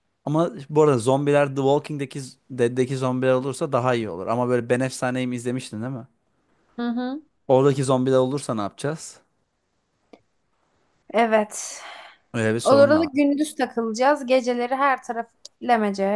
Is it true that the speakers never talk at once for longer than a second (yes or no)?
yes